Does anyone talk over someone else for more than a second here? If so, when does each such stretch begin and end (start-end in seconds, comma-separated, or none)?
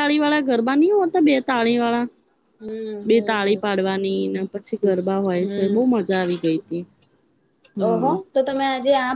none